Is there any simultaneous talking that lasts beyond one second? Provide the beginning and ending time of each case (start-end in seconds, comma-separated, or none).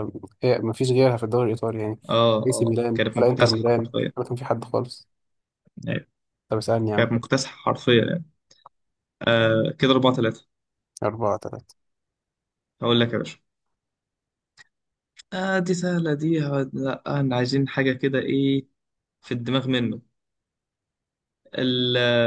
2.5-4.1